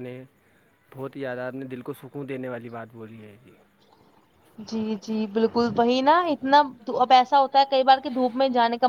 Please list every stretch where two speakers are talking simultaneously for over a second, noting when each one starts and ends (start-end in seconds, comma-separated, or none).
none